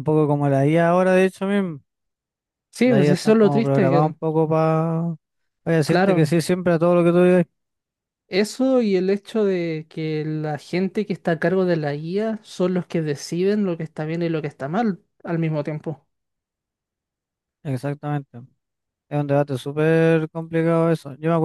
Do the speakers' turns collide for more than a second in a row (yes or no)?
yes